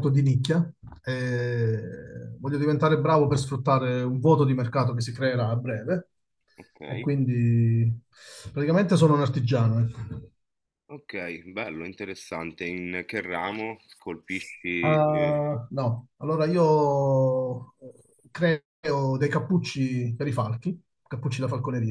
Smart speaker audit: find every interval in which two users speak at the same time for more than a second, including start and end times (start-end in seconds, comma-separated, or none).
none